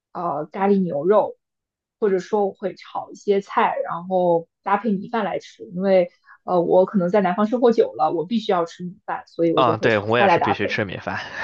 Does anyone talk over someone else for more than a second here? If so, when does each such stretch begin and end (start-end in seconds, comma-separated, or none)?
9.6-10.8